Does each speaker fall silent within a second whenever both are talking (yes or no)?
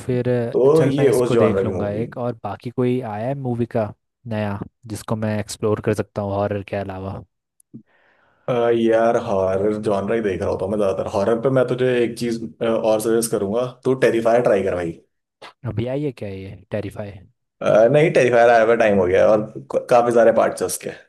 no